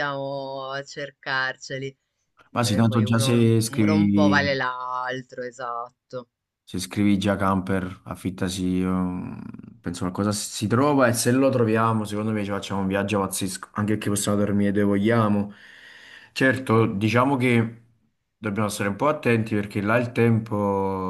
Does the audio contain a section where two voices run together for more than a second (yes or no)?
yes